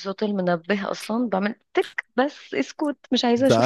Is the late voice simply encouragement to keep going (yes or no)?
no